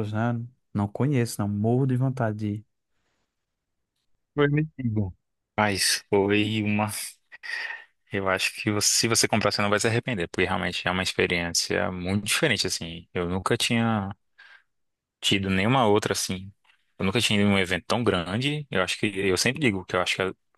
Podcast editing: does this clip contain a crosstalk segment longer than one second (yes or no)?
no